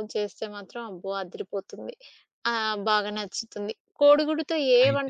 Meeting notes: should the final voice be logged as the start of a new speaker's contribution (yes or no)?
no